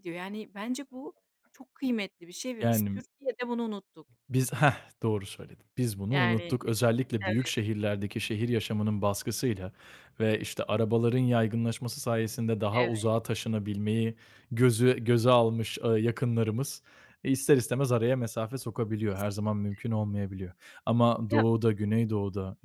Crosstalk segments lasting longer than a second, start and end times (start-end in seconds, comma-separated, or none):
none